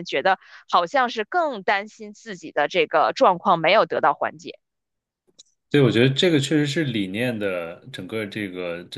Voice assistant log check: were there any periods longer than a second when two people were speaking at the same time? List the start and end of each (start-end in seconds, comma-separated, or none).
none